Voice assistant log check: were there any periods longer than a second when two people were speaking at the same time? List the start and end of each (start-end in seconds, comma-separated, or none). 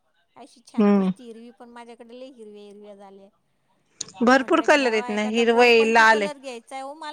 4.4-6.2